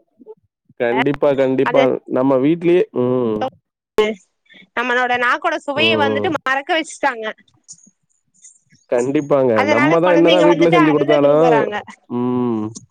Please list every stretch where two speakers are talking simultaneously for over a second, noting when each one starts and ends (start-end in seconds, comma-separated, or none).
9.6-11.5